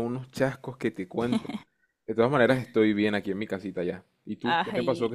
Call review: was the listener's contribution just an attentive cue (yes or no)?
no